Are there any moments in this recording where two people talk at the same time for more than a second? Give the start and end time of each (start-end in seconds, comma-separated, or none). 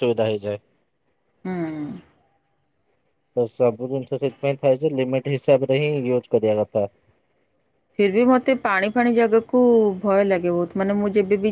none